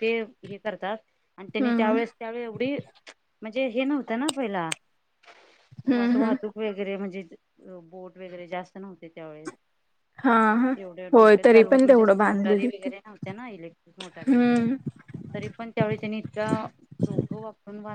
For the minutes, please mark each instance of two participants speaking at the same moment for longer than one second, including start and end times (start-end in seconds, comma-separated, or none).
11.1-12.9